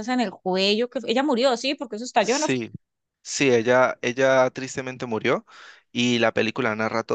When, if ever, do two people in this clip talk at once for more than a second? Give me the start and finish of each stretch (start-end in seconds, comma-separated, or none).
none